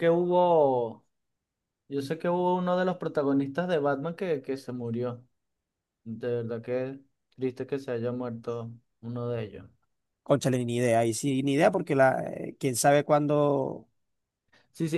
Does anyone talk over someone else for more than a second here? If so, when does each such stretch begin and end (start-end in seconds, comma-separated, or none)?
none